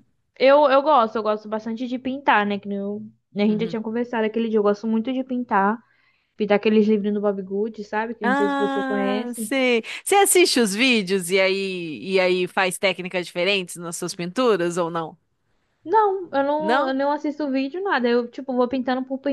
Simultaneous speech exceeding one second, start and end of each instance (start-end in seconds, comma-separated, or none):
8.2-9.5